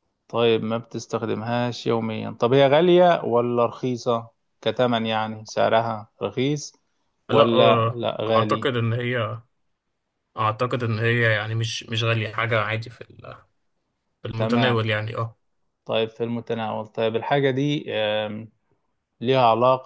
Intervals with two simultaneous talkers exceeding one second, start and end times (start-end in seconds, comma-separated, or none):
7.3-8.7